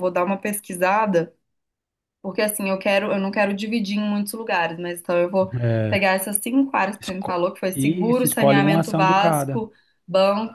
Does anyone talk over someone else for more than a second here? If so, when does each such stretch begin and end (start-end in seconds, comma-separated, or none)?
7.0-9.6